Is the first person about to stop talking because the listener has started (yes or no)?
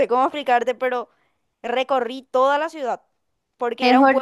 yes